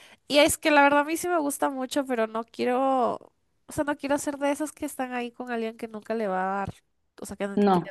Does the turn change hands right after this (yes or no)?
no